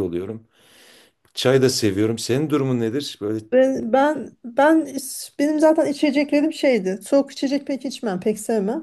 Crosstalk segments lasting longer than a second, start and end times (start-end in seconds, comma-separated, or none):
none